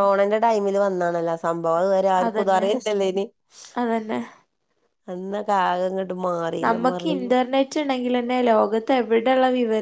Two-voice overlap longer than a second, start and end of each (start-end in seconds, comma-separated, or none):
none